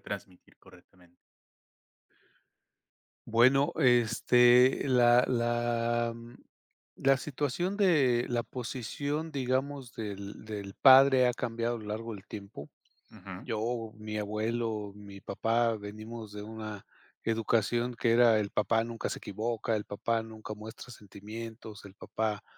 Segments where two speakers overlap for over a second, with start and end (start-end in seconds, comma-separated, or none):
none